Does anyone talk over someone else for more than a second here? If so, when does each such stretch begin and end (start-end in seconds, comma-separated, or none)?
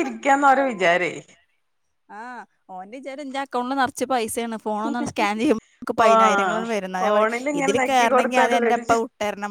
7.0-8.8